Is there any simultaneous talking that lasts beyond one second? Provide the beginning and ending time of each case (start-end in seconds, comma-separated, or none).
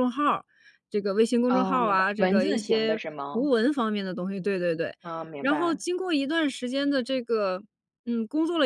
1.5-3.5